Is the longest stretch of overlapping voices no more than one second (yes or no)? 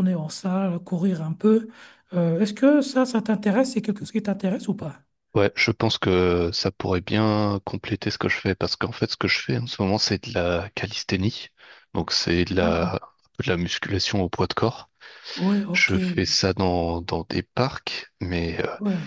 yes